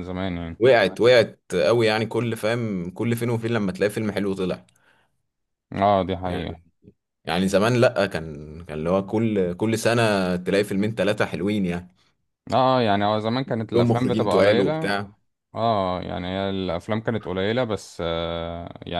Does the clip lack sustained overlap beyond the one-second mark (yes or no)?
no